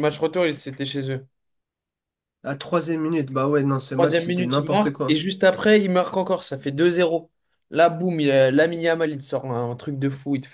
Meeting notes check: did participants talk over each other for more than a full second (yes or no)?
yes